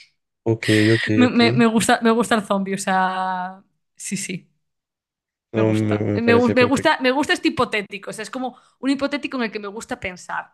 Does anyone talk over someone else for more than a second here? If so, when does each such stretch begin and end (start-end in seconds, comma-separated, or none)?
5.6-6.9